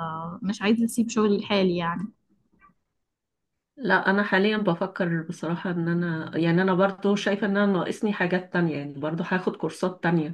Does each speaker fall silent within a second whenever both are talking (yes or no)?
yes